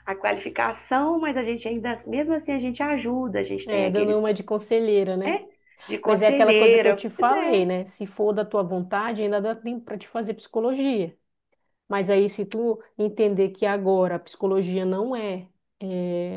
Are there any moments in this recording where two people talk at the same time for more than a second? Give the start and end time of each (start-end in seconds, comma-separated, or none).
6.0-7.7